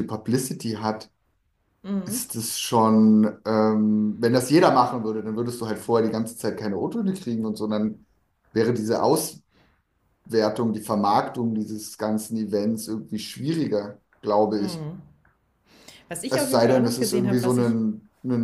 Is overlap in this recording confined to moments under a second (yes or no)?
no